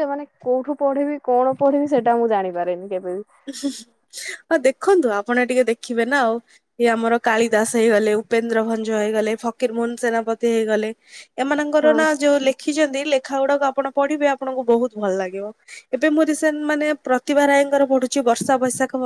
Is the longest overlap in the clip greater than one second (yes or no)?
no